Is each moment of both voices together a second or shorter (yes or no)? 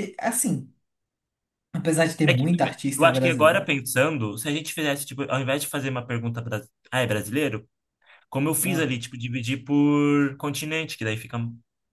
no